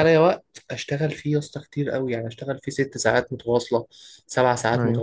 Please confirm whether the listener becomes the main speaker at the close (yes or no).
no